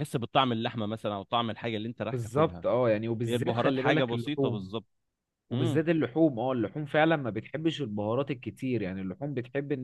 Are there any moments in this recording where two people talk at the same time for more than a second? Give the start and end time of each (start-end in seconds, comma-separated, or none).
3.3-4.7